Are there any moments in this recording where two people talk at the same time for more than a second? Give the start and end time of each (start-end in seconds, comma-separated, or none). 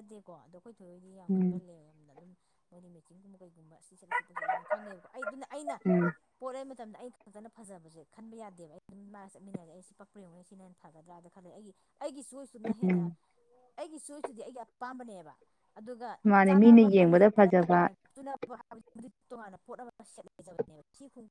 none